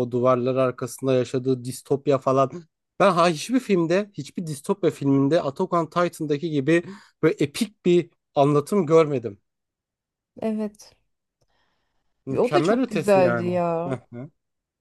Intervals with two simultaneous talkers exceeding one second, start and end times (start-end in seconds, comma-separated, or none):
12.4-14.0